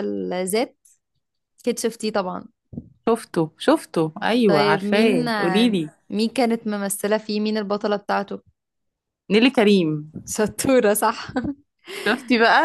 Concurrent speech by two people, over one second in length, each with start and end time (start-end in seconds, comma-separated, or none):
4.5-5.8